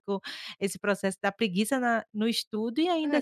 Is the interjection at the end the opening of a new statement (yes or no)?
yes